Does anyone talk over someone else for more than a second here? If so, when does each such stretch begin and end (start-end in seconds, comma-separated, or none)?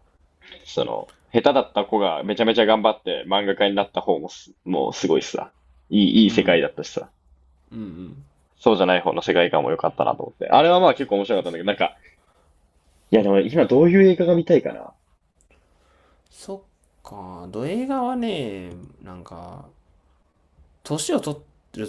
none